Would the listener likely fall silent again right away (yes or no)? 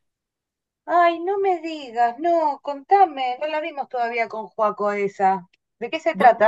no